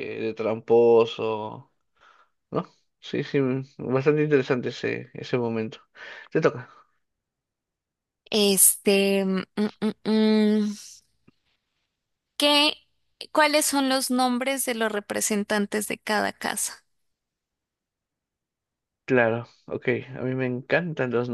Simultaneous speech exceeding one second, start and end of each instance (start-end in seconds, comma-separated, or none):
none